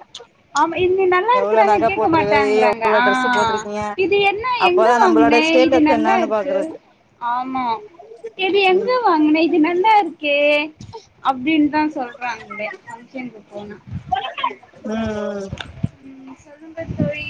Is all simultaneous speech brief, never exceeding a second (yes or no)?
no